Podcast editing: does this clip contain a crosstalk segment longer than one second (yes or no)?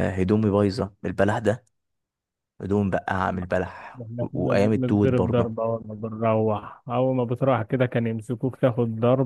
yes